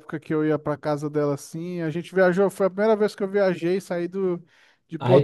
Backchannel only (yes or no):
no